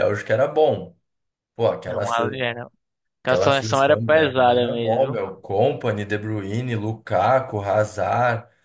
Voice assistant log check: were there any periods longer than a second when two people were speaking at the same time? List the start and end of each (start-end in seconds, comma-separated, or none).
3.2-5.2